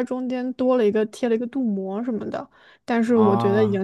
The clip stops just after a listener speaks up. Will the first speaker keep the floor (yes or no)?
yes